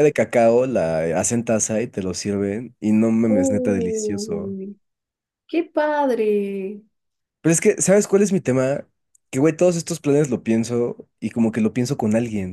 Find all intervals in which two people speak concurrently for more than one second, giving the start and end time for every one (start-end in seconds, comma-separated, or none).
3.3-4.6